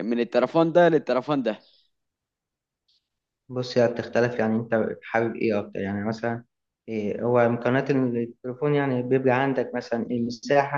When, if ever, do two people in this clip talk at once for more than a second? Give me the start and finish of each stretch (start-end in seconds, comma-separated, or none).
none